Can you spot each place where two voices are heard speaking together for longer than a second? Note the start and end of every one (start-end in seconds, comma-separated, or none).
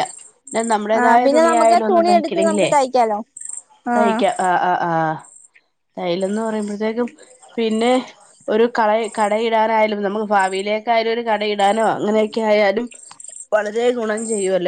1.0-2.7